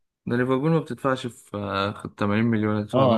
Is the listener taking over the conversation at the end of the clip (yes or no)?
yes